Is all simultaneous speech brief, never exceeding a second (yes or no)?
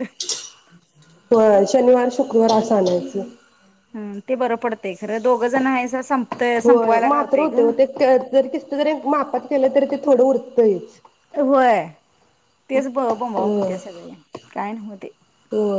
yes